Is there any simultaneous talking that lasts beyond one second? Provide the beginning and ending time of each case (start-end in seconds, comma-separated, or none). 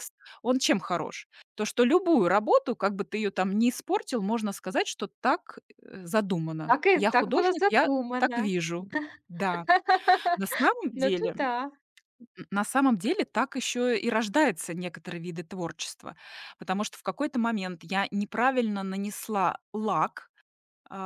6.7-8.5